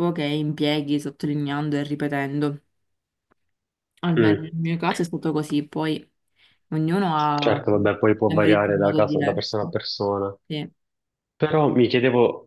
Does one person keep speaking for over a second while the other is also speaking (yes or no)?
yes